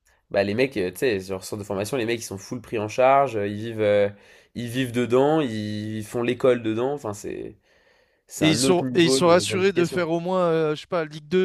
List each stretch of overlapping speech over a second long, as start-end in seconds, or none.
8.4-10.1